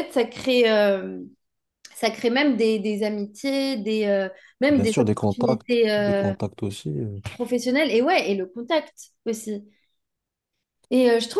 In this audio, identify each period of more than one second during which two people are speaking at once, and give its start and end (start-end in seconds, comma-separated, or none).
4.7-6.3